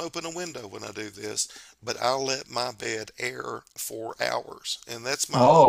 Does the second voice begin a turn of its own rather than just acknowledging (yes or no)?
no